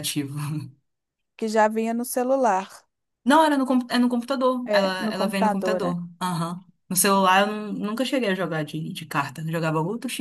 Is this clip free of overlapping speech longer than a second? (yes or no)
no